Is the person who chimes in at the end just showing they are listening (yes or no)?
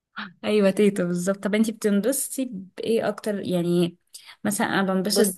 yes